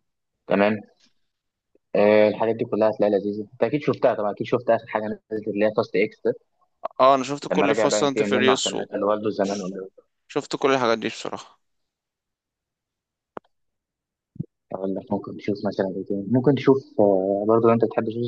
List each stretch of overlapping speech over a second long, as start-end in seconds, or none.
7.5-8.8